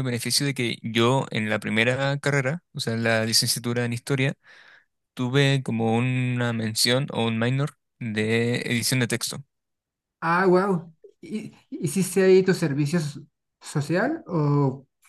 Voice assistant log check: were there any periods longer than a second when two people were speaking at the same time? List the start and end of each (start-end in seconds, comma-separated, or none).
none